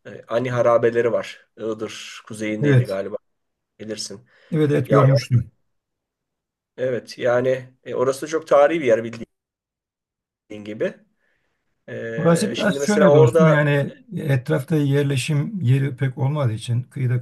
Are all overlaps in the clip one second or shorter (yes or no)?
no